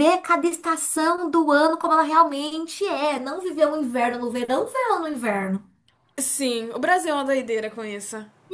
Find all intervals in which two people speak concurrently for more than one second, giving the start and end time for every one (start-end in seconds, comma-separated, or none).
none